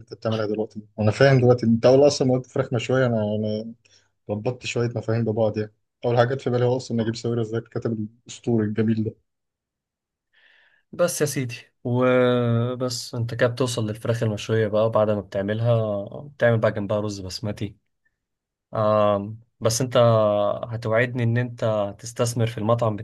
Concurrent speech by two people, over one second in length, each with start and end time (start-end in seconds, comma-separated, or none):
none